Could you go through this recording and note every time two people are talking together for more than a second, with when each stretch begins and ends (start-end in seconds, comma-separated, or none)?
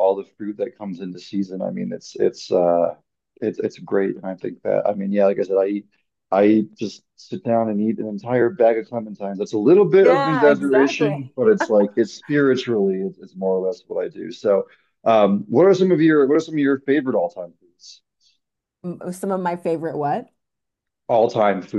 10.0-11.2